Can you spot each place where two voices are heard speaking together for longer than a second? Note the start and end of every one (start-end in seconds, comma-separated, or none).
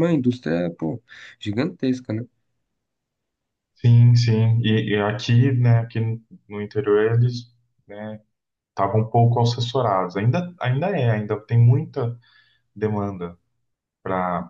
none